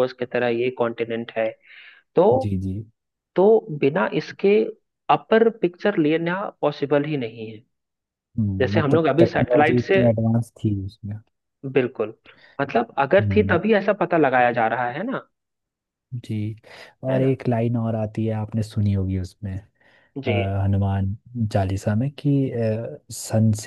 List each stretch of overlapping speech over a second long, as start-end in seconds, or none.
8.6-10.0